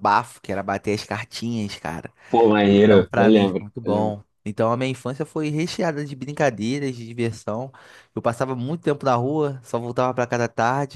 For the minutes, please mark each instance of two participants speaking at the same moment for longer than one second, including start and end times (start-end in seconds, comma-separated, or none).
2.6-4.2